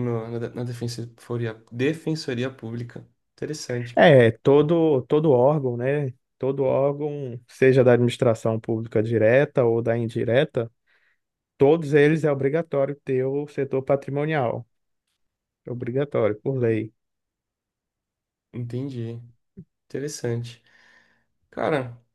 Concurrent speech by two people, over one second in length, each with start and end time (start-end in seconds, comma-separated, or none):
none